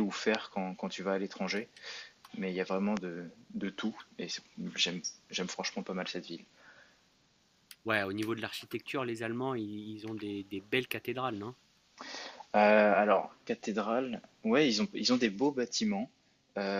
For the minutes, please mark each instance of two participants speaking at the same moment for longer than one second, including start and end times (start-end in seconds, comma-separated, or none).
none